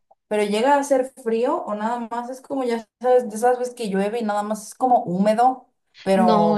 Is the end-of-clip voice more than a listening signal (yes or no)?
yes